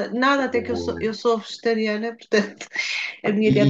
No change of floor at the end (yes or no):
no